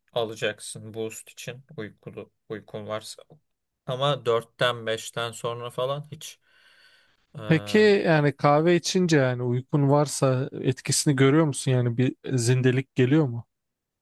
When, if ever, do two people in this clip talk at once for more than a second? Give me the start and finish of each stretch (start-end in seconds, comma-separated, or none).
none